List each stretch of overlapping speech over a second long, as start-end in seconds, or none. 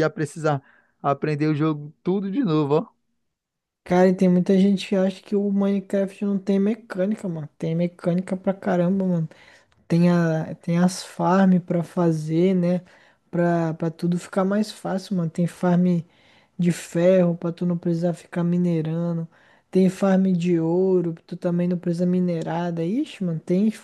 none